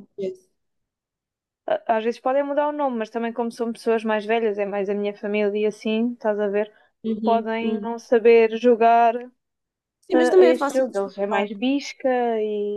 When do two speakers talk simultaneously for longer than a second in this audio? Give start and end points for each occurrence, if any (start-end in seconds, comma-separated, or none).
10.0-11.5